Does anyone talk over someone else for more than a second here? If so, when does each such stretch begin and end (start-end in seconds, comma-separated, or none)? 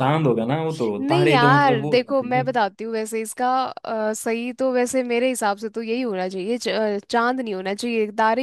1.0-2.5